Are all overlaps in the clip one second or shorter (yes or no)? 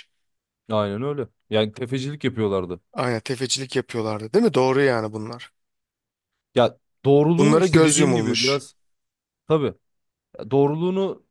no